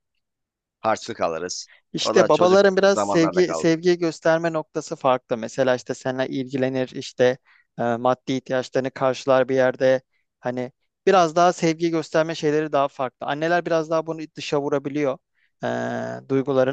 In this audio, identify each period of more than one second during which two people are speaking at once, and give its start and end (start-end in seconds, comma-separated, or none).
1.9-3.7